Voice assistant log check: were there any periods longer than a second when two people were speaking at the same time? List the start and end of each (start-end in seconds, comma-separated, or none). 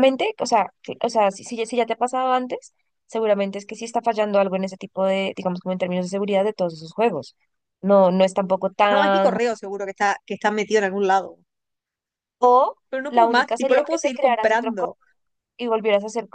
12.9-14.9